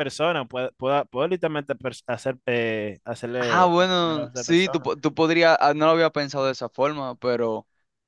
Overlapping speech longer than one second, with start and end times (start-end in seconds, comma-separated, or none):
3.4-4.9